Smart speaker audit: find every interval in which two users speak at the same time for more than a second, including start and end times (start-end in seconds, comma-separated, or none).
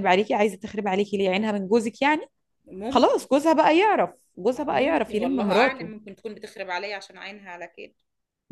4.7-5.9